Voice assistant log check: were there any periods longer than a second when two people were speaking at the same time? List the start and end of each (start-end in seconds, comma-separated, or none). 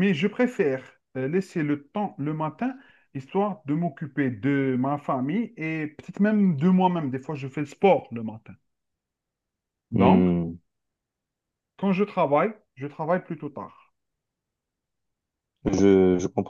none